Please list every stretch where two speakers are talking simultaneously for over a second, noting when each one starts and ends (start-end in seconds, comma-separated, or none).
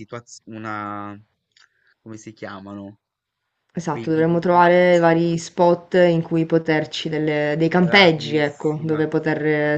3.9-5.2, 7.8-9.1